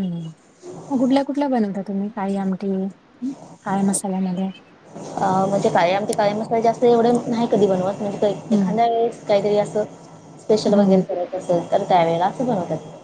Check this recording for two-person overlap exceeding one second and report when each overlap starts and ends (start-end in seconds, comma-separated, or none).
none